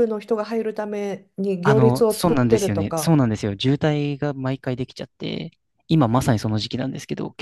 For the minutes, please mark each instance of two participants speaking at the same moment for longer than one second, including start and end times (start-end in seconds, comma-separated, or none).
1.6-3.2